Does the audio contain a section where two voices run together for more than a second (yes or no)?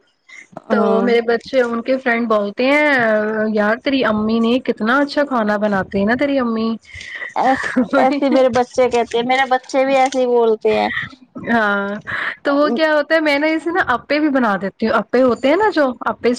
no